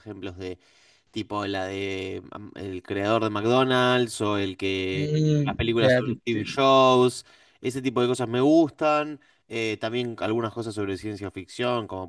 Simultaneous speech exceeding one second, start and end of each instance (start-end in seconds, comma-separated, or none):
4.9-6.6